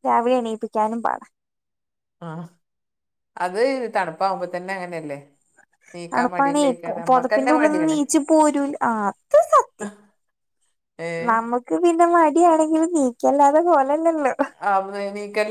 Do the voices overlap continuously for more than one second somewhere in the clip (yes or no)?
yes